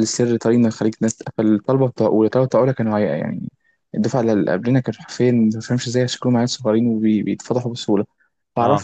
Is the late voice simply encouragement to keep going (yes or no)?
yes